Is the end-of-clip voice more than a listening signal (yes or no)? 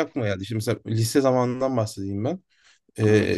no